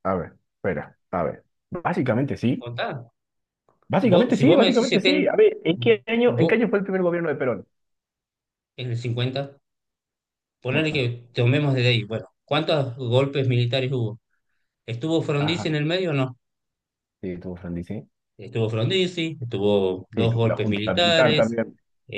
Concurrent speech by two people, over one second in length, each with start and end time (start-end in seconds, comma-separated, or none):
4.0-5.3, 20.1-21.6